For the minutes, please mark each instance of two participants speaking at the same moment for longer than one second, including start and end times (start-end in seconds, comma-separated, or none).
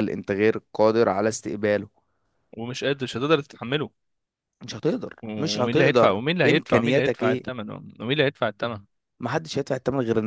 5.2-7.5